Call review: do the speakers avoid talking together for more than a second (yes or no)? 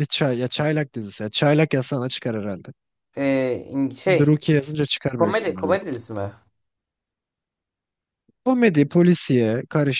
yes